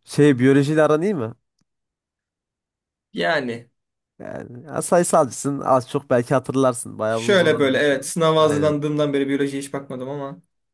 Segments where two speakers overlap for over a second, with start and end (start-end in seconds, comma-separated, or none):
7.1-8.8